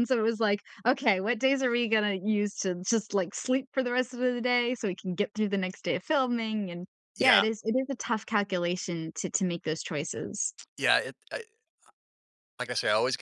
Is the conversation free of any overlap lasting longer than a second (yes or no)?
yes